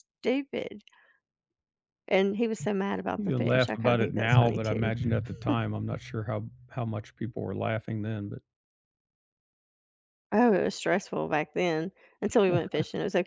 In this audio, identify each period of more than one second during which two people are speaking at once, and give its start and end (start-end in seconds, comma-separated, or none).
3.2-4.9